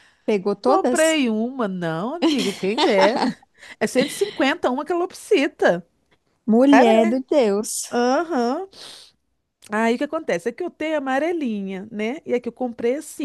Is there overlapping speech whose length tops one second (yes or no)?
no